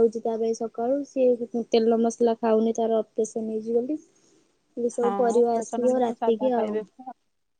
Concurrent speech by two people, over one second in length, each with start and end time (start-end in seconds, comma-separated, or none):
5.0-6.8